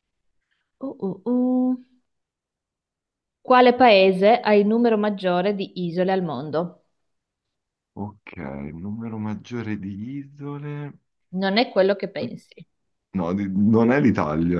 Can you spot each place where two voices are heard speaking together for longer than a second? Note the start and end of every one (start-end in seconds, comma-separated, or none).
none